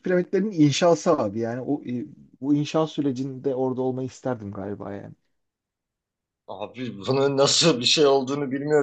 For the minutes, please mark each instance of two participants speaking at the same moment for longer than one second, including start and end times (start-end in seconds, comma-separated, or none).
none